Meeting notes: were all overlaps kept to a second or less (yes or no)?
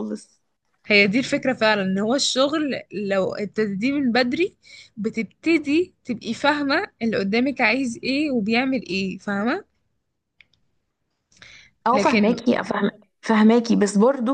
yes